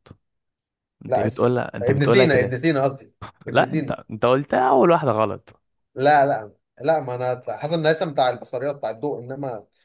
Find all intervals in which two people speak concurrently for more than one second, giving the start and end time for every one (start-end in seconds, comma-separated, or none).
1.1-2.6